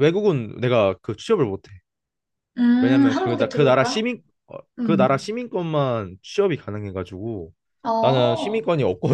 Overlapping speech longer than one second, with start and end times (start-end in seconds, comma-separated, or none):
2.8-4.0